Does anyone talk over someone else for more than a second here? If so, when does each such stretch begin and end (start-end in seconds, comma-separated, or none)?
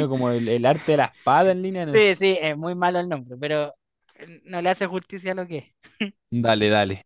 none